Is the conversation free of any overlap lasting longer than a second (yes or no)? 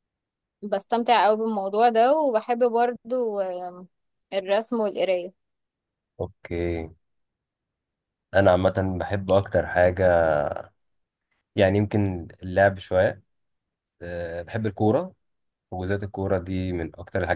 yes